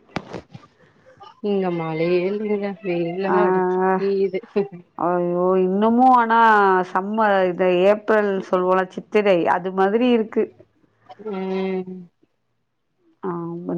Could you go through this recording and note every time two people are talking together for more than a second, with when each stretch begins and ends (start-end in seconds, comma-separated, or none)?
none